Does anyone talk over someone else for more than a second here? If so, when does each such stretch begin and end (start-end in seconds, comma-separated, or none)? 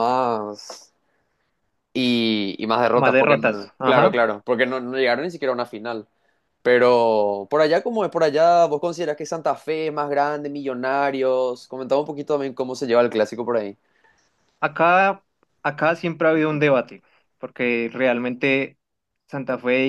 2.9-4.2